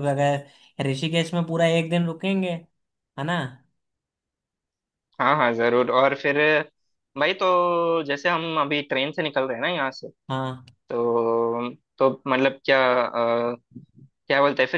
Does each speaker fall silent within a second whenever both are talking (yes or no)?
yes